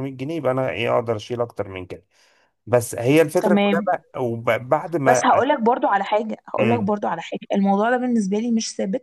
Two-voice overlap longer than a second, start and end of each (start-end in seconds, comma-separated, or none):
none